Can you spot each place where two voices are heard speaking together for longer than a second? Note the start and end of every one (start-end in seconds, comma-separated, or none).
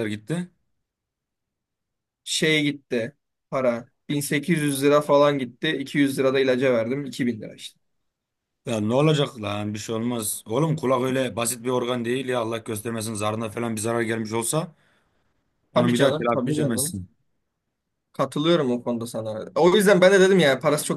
15.7-17.0